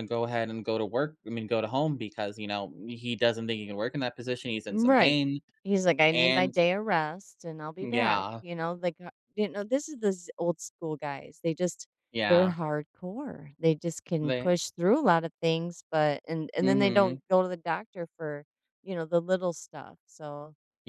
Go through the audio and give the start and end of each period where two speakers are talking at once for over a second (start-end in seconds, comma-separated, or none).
none